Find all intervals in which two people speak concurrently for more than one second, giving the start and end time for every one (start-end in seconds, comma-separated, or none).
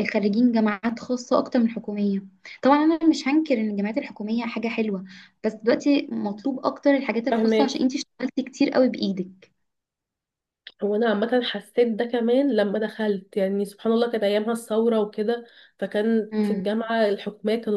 none